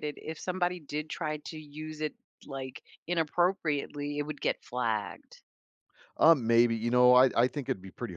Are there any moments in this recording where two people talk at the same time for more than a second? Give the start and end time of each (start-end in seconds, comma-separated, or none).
none